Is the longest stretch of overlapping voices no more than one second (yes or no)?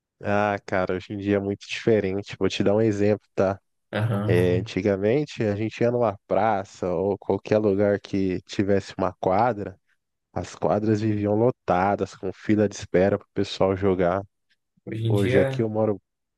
yes